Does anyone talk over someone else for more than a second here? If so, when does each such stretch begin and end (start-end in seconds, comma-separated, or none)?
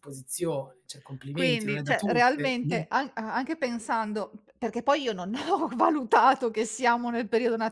1.4-2.8